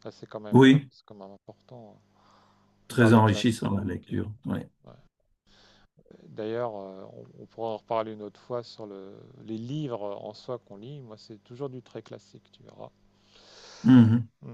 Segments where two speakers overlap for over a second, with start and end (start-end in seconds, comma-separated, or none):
2.9-4.2